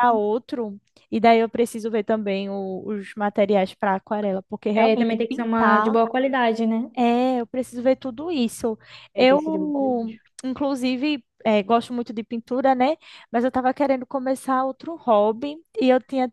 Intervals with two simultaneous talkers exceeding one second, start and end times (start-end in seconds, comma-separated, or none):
4.7-6.0